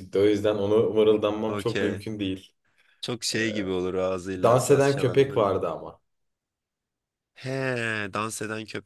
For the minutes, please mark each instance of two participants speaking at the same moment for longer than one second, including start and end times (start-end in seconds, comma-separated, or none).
4.4-5.7